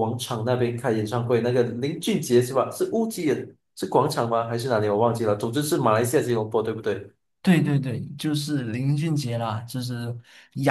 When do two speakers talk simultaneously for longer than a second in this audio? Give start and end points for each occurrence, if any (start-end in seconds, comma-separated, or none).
none